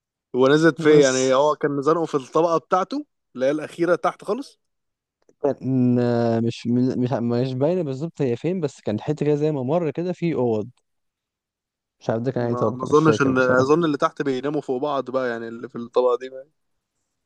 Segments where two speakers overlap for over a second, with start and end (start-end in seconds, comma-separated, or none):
12.4-13.7